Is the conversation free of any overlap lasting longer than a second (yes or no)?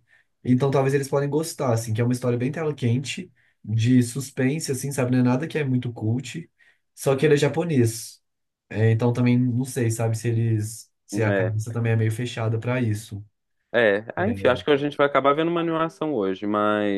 yes